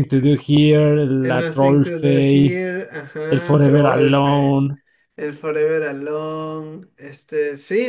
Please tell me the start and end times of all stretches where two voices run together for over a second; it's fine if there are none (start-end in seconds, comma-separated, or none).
1.2-2.6, 3.3-4.7